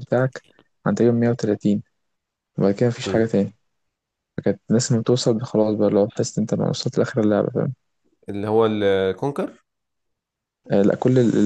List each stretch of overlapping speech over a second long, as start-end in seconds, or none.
none